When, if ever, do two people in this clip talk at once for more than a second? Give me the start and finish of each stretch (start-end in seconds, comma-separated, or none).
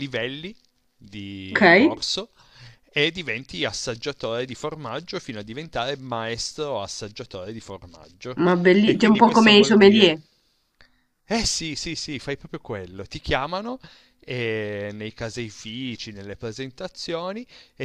8.8-10.1